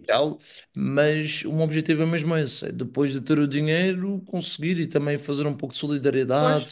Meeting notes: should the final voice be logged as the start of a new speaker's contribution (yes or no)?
yes